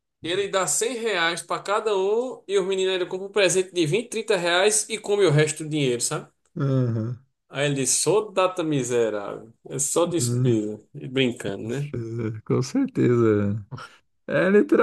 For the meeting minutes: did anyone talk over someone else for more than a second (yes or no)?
no